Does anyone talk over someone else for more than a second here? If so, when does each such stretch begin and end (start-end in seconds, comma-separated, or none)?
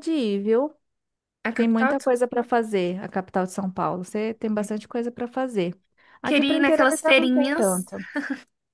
6.3-7.7